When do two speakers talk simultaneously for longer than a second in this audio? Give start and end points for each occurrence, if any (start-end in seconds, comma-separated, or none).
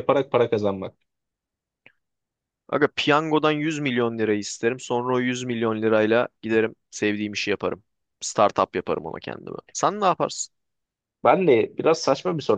none